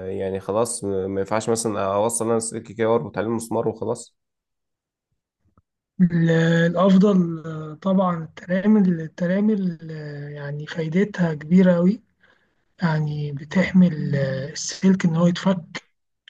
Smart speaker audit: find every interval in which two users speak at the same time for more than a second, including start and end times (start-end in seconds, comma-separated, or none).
none